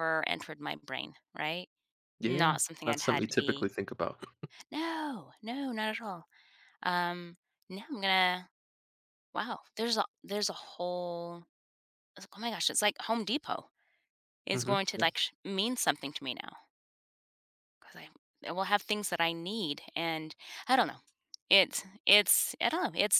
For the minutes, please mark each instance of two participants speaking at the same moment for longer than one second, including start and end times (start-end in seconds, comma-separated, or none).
2.2-3.7